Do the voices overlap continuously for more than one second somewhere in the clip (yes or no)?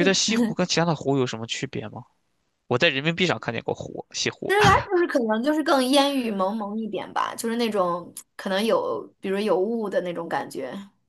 no